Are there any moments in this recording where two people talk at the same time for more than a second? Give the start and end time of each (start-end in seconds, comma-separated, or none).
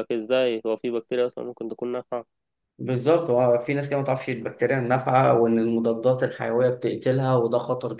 none